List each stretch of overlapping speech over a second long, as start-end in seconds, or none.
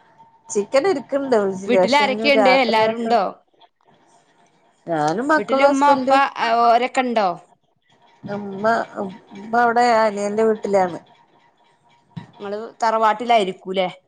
1.7-3.2